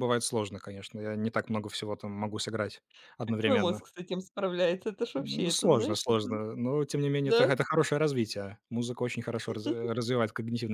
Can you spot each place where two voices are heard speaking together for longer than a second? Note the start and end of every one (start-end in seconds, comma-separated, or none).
5.2-6.4